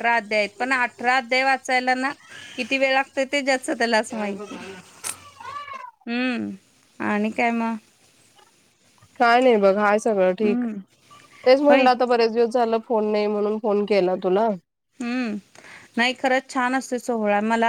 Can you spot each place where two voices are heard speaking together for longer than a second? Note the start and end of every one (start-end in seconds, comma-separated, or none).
none